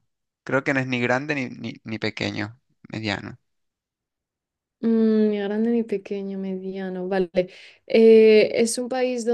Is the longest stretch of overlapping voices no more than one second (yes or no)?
yes